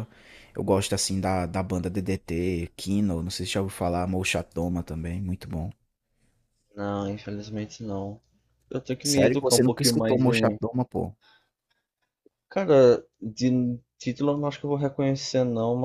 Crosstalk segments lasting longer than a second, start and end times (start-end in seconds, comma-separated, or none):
9.0-10.6